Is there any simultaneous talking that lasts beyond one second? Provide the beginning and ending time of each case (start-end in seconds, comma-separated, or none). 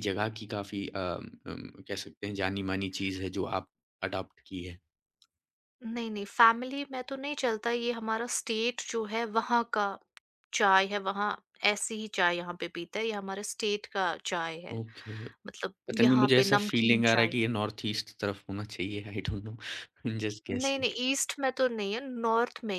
15.9-17.3